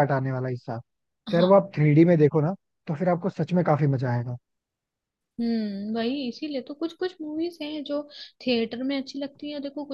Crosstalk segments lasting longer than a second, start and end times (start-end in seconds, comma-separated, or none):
none